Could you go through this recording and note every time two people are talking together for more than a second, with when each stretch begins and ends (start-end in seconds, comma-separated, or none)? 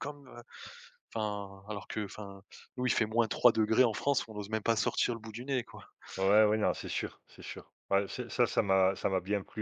none